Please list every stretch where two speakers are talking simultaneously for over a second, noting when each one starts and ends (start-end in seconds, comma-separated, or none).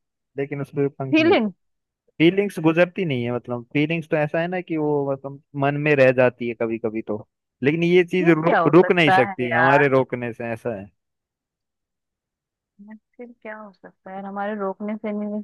8.2-9.8